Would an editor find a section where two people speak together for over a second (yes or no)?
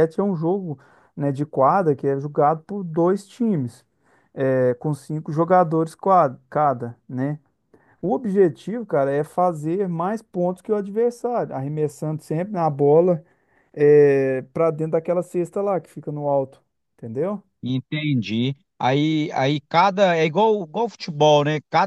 no